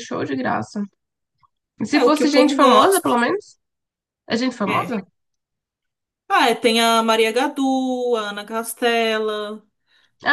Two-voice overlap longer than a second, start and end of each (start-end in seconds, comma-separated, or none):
1.9-3.2